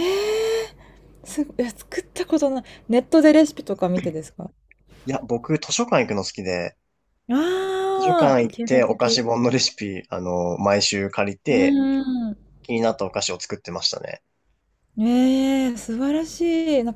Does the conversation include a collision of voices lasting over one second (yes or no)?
yes